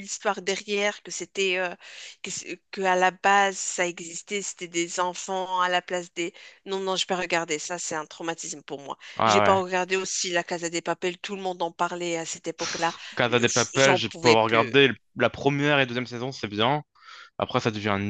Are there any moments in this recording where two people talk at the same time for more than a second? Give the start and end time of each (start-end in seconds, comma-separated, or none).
13.2-14.8